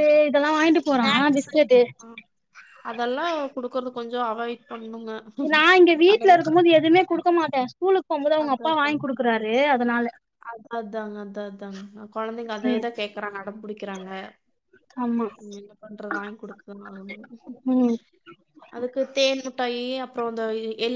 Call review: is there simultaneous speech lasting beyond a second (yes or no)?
no